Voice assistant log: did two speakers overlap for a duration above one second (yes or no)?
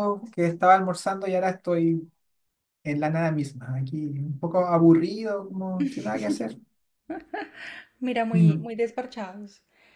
no